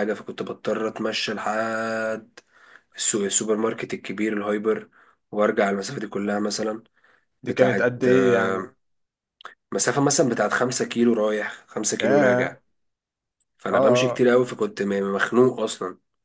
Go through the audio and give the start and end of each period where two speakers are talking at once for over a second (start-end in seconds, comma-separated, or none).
7.5-8.7